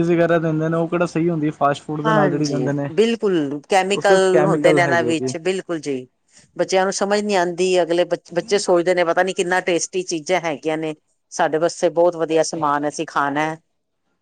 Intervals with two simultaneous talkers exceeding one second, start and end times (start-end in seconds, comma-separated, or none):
3.9-5.3